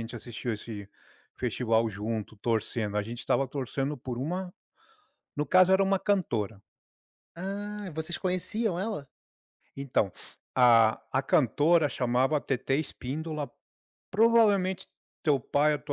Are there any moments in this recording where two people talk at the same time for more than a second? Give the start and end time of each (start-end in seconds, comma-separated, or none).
none